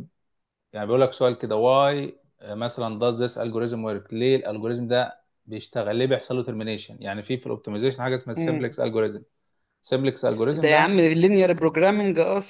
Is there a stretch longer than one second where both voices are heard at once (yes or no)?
no